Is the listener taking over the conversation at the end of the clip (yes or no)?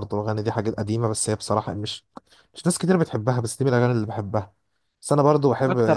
no